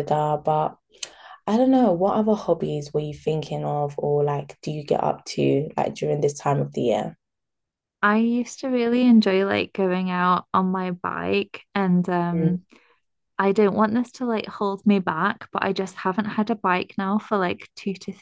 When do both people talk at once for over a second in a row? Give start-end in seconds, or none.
none